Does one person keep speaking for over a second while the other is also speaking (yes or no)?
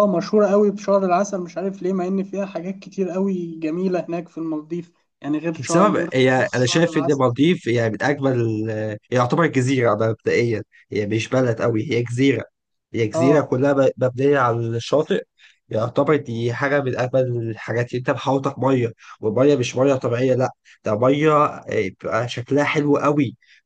yes